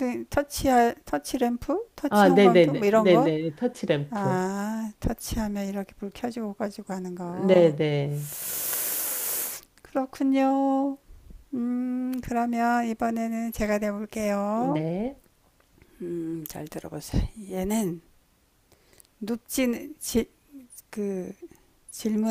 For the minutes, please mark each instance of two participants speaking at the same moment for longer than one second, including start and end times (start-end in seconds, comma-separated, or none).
2.1-3.3